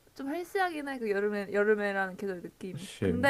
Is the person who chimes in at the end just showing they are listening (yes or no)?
yes